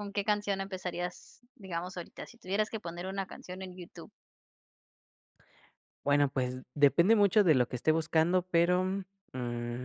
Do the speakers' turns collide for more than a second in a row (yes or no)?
no